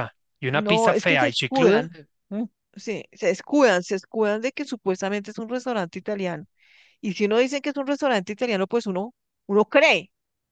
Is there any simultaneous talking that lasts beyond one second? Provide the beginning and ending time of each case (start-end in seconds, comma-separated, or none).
0.5-1.9